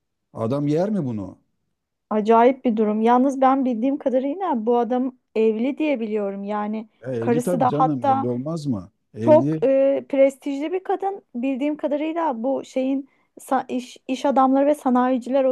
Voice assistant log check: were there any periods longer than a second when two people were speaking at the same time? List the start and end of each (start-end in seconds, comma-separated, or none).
7.0-8.3